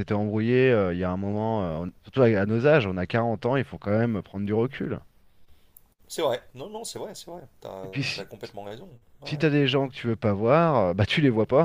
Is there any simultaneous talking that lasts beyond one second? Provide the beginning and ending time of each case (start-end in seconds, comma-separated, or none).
none